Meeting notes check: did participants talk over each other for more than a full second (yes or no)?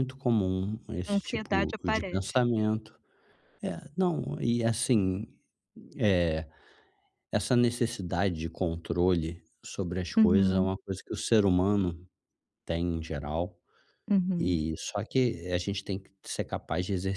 yes